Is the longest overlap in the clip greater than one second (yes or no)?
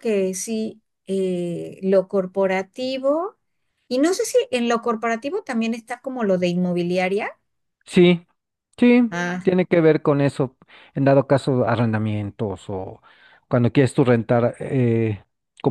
no